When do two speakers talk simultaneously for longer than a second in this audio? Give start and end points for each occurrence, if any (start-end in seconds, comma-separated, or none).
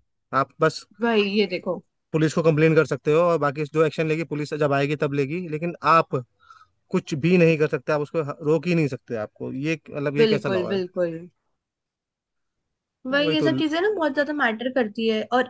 none